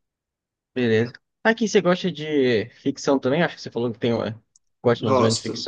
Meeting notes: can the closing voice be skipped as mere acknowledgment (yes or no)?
no